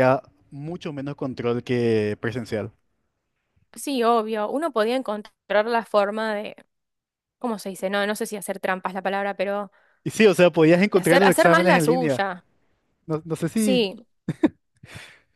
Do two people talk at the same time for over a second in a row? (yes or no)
yes